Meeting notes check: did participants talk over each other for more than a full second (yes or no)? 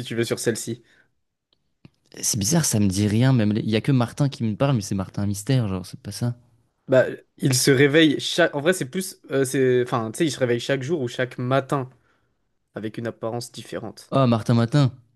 no